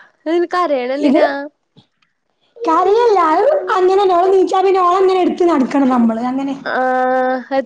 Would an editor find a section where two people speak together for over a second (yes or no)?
no